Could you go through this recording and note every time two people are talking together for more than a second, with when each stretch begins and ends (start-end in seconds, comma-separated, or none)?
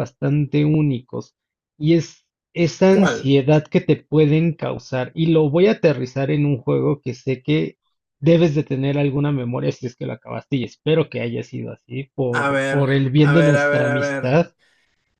12.3-14.3